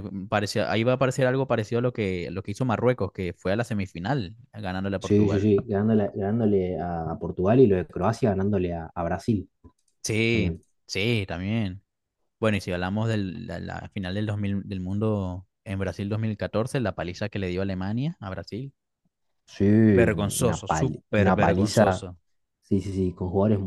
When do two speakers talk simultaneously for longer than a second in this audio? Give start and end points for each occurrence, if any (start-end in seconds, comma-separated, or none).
20.0-22.1